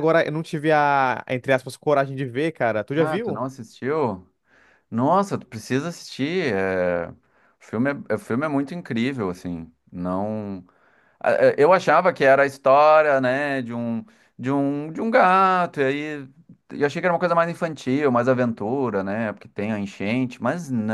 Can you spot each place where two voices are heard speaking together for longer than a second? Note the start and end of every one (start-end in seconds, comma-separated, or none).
none